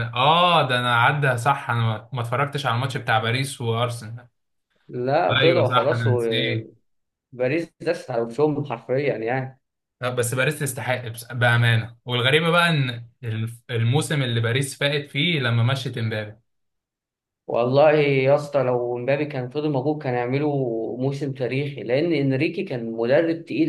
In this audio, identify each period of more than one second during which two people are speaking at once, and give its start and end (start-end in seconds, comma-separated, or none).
5.4-6.7